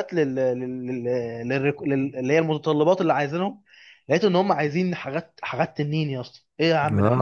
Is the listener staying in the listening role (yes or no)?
no